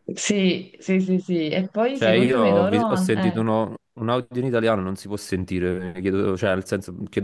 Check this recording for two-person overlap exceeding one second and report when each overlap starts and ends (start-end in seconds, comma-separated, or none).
1.9-3.4